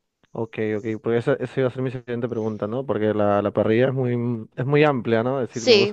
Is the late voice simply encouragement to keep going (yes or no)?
no